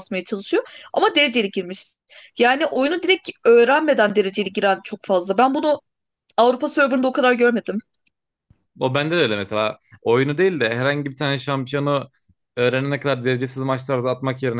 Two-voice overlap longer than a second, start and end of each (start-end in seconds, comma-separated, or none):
none